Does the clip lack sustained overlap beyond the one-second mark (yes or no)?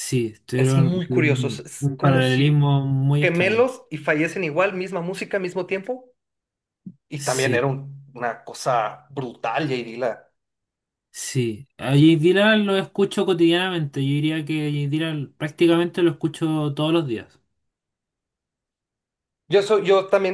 no